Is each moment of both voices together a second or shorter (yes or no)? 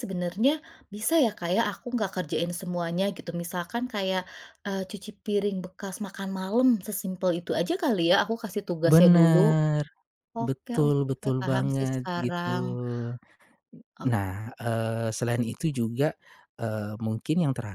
no